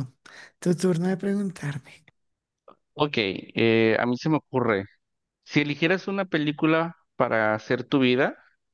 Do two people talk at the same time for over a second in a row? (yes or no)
no